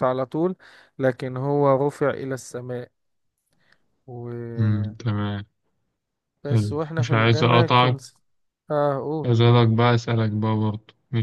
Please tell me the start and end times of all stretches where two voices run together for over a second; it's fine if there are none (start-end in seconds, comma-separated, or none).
6.7-8.0